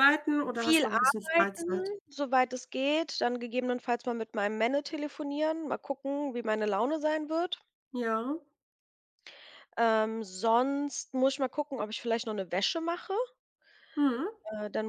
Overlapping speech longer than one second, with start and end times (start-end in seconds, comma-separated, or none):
0.5-1.9